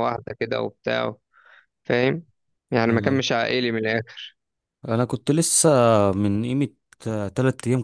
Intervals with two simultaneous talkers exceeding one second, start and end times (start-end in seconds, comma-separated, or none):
none